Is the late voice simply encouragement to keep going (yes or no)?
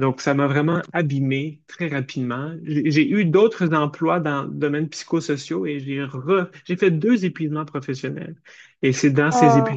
yes